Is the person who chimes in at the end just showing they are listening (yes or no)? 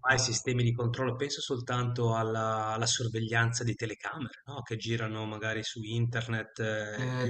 no